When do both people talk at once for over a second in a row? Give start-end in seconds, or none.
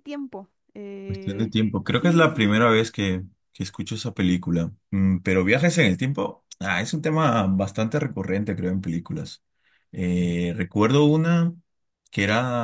1.1-2.6